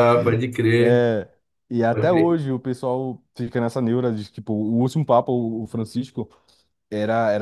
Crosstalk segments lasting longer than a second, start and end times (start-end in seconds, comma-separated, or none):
none